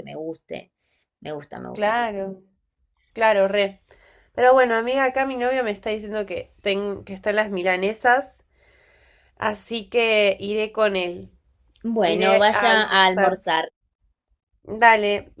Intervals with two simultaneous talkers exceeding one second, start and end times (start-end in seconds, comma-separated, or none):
12.0-13.4